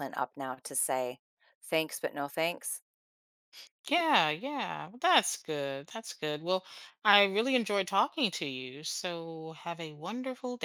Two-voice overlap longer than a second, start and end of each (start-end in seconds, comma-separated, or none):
none